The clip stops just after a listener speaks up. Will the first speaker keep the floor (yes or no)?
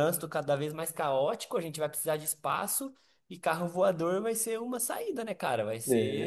yes